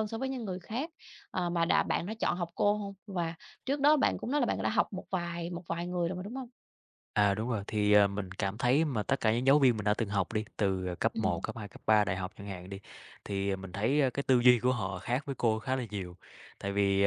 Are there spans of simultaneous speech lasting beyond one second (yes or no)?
no